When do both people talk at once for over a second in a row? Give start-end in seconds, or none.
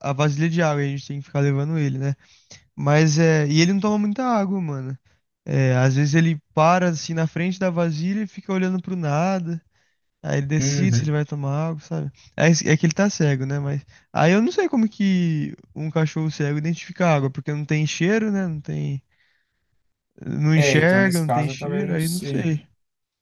20.6-22.6